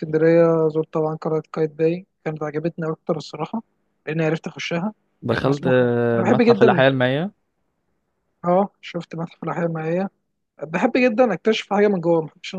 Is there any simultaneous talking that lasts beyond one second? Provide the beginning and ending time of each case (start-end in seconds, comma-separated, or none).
5.3-6.8